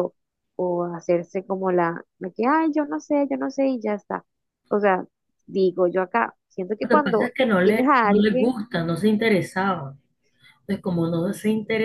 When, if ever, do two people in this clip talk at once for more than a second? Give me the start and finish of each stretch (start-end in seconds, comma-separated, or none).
6.8-8.5